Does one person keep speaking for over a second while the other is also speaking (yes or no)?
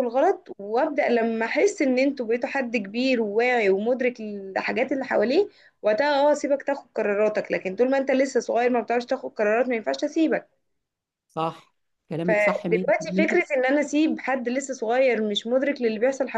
yes